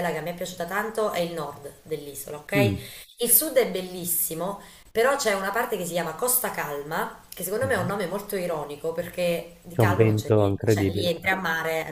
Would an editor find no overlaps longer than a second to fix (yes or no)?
no